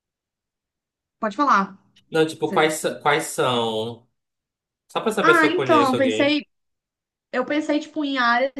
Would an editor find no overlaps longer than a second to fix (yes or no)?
no